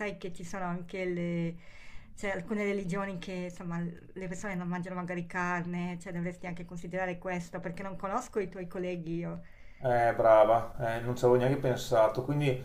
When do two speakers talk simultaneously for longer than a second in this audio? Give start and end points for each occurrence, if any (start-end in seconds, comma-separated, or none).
none